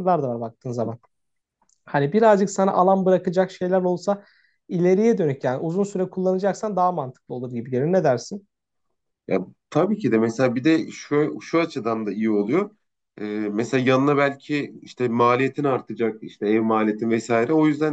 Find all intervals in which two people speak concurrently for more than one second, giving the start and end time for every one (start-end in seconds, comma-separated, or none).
none